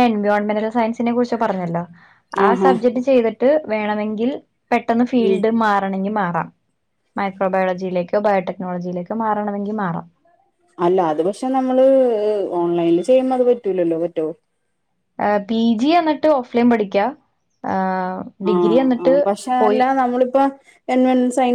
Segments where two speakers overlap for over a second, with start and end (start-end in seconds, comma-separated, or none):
none